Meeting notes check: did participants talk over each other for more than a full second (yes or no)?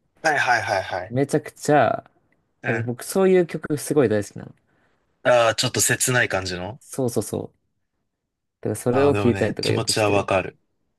yes